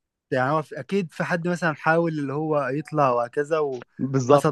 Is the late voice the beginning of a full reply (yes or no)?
yes